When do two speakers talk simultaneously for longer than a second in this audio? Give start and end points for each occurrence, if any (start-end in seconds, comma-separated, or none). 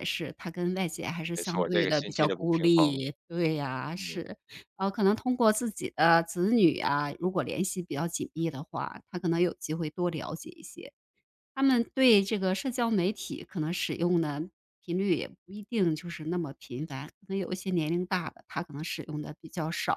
1.4-3.0